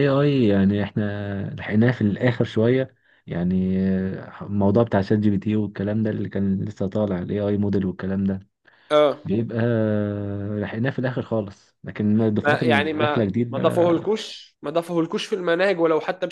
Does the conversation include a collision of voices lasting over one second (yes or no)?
yes